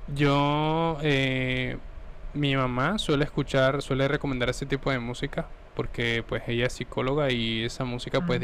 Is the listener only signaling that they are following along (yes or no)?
yes